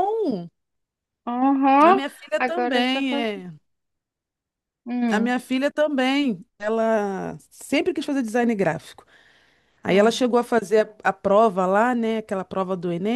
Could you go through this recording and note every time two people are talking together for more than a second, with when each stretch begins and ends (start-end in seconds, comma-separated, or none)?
1.9-3.5